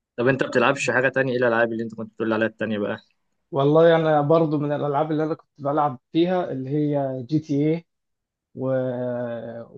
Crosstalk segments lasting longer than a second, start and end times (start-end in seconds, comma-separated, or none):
none